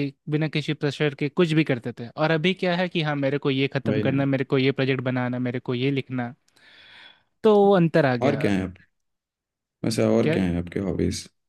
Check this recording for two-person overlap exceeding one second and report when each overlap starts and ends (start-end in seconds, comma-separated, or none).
none